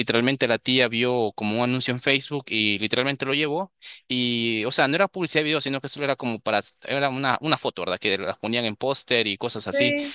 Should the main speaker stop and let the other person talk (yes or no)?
no